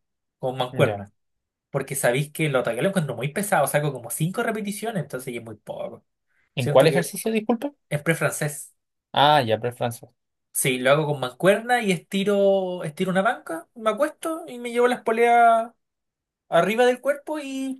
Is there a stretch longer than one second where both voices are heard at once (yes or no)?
no